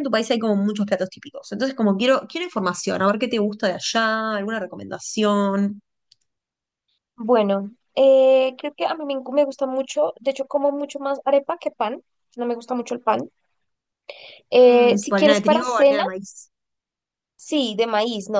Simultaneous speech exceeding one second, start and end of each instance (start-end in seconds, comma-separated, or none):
14.7-16.0